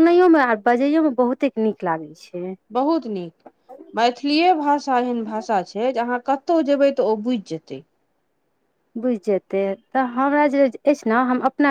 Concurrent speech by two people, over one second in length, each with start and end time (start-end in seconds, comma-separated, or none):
none